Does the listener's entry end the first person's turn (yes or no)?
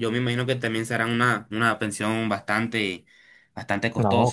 yes